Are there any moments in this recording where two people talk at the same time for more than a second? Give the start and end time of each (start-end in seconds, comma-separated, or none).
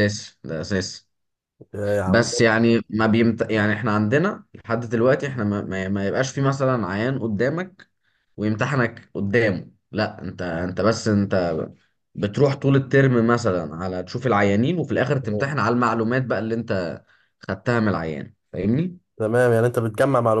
none